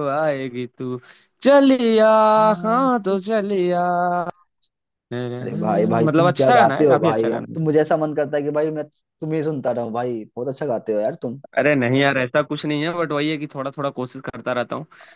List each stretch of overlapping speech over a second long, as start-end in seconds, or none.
6.0-7.6